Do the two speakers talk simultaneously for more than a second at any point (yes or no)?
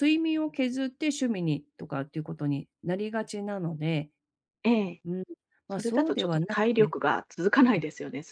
yes